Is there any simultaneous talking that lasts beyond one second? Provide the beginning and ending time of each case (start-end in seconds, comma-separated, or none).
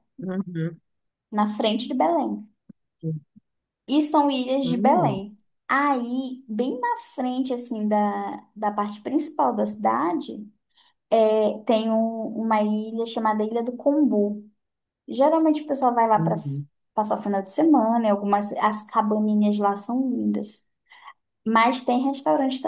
none